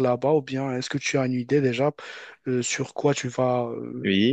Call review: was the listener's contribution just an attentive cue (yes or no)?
no